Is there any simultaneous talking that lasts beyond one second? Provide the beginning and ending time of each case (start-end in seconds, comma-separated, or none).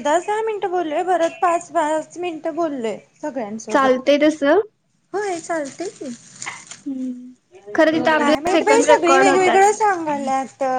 8.2-9.7